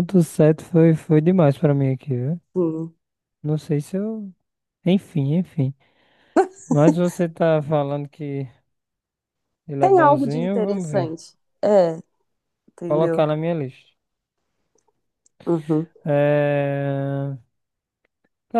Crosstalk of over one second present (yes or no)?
yes